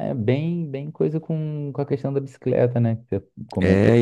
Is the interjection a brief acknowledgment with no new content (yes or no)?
no